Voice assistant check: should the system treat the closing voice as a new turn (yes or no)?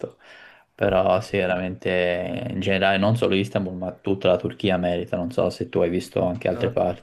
yes